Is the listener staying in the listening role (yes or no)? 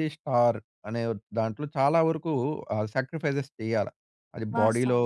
yes